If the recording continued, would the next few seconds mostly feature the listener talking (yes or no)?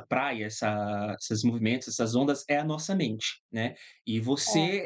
no